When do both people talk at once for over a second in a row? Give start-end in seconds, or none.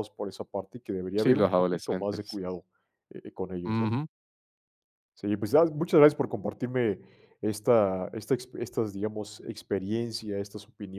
1.2-2.4